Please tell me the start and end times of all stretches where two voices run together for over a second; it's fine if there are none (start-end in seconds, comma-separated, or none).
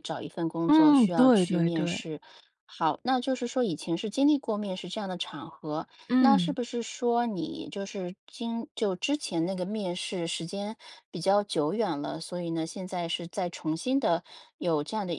0.7-2.0